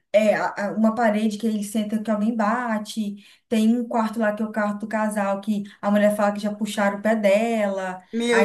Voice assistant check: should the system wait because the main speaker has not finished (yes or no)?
no